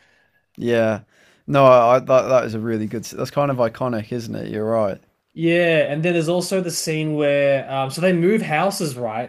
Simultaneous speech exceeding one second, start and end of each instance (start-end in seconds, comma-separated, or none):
none